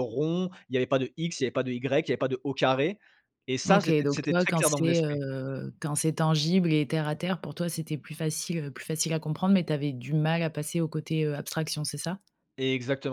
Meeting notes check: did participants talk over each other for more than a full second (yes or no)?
yes